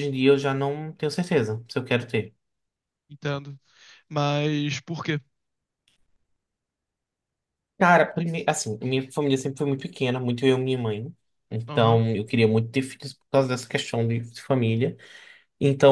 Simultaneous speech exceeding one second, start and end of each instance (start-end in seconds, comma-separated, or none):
none